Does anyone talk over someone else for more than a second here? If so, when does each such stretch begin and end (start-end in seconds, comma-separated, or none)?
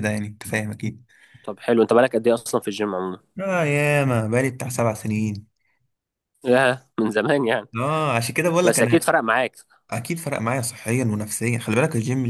none